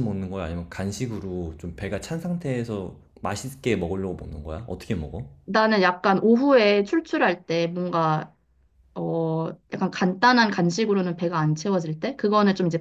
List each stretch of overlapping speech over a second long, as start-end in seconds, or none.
none